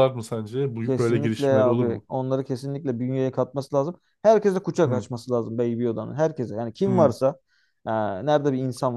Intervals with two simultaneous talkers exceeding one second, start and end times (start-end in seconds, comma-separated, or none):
0.8-2.1